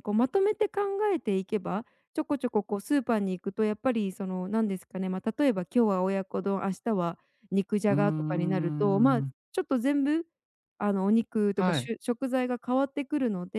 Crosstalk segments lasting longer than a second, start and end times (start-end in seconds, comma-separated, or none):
7.9-9.3